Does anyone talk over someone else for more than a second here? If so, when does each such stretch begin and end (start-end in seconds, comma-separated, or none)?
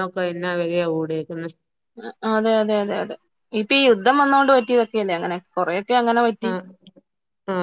none